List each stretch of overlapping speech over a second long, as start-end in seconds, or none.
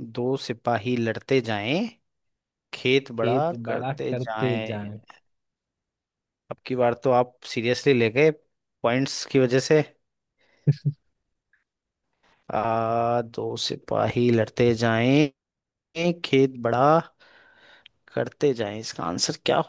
3.2-4.8